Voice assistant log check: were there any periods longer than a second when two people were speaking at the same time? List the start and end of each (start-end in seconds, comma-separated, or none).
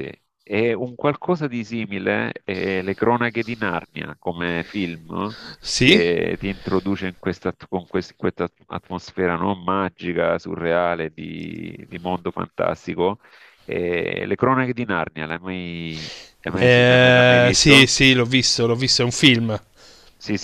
16.5-17.9